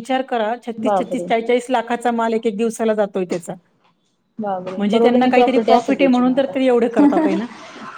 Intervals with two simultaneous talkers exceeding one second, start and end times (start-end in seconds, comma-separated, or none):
4.8-6.5